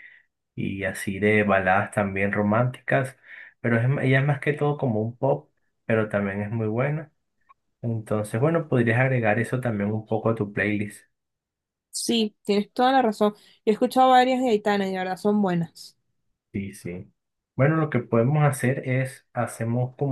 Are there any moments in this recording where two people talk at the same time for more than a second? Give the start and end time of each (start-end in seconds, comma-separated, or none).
none